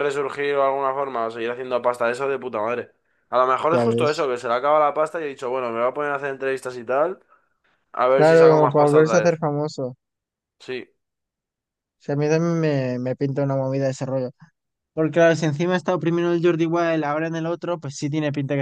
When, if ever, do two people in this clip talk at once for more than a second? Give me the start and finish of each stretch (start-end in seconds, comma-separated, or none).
8.1-9.4